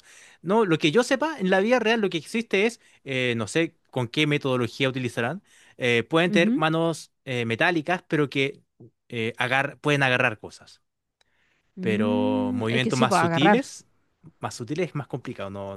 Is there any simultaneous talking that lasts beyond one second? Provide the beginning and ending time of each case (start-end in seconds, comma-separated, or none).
11.8-13.7